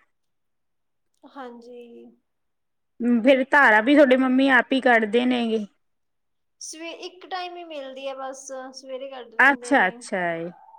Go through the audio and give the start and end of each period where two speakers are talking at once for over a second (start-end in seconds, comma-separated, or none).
none